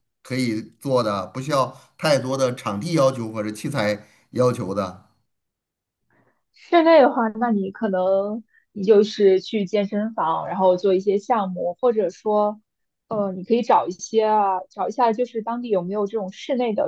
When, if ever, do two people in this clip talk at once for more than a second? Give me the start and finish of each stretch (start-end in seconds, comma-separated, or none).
none